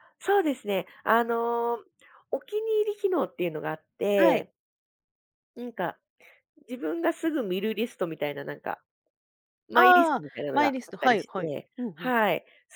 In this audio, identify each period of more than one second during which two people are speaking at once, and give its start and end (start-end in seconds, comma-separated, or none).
9.7-12.1